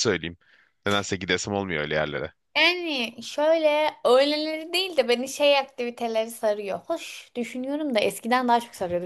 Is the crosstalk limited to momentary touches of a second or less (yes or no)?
yes